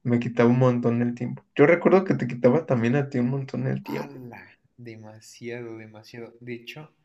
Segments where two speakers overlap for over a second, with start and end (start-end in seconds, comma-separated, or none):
none